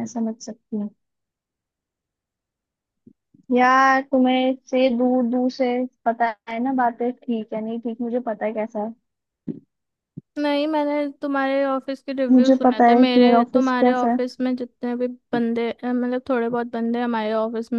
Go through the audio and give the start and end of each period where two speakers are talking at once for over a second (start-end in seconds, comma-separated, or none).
12.3-14.2